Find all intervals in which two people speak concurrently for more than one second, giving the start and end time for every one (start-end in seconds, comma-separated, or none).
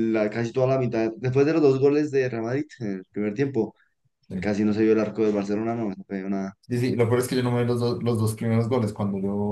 none